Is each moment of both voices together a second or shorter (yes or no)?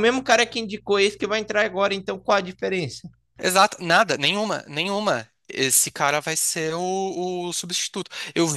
yes